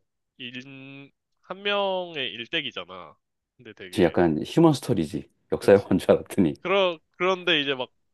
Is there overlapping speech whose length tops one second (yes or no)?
no